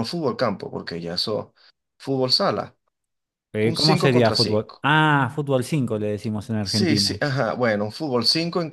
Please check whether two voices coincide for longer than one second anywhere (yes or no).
yes